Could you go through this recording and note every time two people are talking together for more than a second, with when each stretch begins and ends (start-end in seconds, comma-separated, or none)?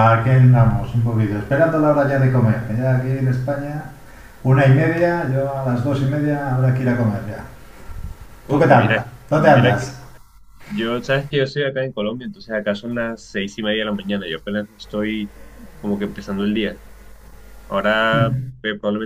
8.5-9.9